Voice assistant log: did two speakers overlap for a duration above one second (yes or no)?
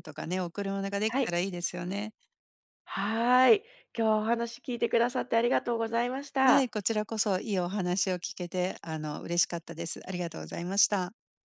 no